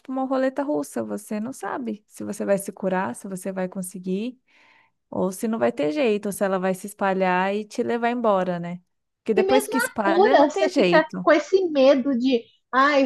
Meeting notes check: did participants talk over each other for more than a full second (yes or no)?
yes